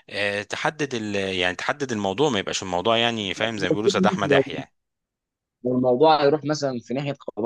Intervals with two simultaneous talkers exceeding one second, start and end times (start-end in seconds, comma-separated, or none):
none